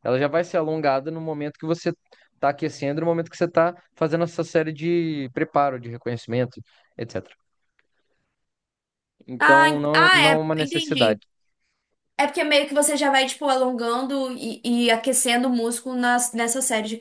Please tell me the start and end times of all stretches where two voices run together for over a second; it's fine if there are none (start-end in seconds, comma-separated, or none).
9.4-11.2